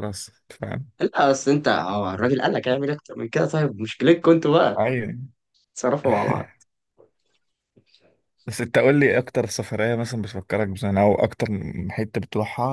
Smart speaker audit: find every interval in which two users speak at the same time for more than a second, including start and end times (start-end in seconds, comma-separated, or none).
none